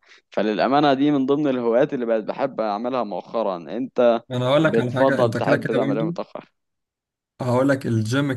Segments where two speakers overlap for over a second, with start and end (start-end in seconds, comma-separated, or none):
4.6-6.0